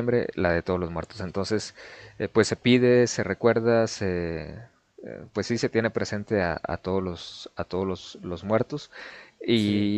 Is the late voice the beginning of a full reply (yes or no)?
no